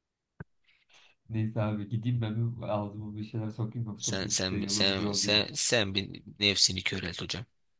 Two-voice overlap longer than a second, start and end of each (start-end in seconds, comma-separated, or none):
4.0-5.4